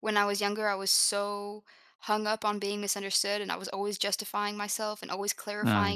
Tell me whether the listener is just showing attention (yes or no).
yes